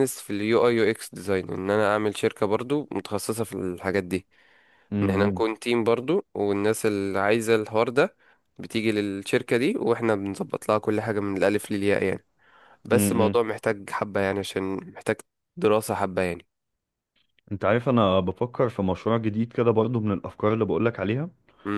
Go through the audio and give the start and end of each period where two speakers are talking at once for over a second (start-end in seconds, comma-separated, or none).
none